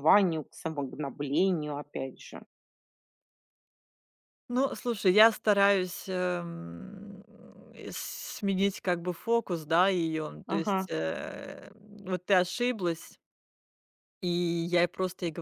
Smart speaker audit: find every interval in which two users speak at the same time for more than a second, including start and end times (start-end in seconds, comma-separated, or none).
none